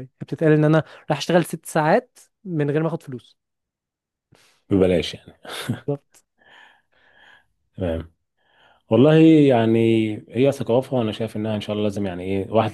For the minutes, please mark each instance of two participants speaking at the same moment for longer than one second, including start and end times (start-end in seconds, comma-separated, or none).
none